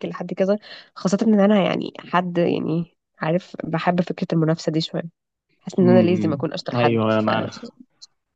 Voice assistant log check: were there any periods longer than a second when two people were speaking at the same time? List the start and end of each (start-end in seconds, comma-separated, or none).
5.8-7.3